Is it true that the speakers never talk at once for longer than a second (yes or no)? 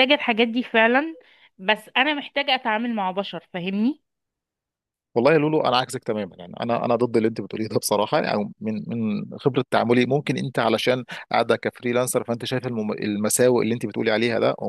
yes